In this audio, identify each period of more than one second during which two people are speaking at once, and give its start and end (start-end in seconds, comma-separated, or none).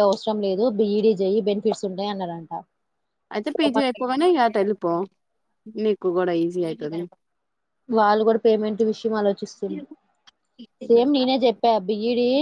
none